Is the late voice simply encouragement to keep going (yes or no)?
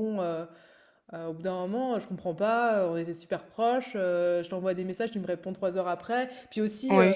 yes